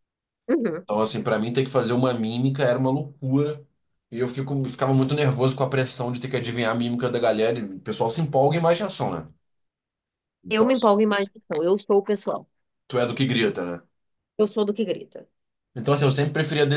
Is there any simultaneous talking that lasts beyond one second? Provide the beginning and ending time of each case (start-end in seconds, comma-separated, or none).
none